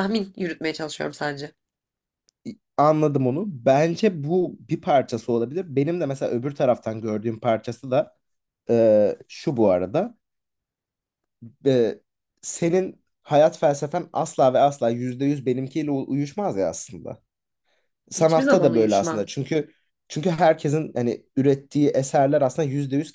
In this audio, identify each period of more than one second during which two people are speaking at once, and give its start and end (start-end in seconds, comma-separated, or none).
18.1-19.4